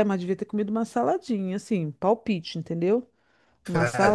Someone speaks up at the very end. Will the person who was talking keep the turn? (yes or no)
no